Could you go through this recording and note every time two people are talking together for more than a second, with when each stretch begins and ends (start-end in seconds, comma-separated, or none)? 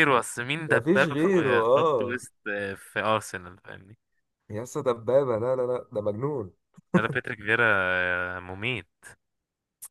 0.7-2.2